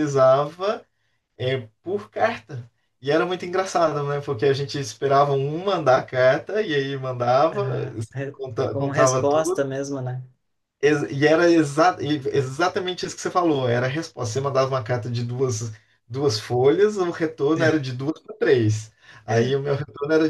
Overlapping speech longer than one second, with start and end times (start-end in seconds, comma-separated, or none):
8.3-9.7